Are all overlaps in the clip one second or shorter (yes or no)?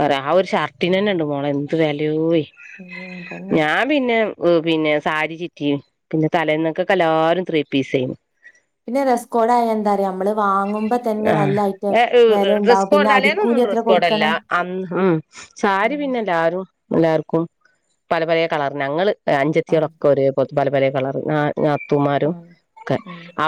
no